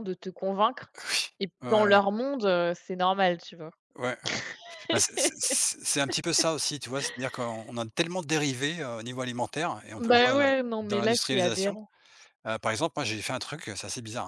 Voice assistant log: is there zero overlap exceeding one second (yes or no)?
no